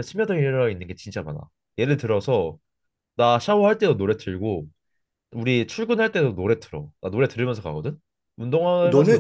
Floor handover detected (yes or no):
yes